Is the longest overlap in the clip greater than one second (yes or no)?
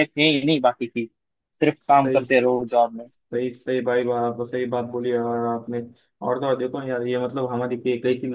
no